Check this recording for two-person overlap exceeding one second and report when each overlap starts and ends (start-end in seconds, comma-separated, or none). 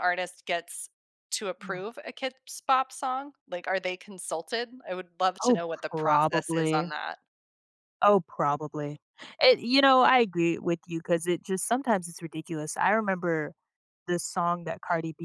5.4-6.9